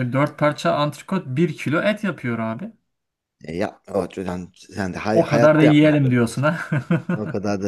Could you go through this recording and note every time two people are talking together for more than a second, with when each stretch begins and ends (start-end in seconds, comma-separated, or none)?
5.1-6.5